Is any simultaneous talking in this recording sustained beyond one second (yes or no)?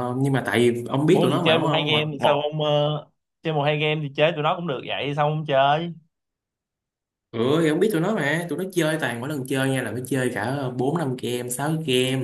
yes